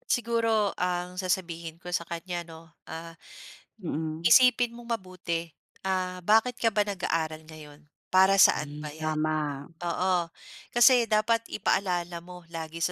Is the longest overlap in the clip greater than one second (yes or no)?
no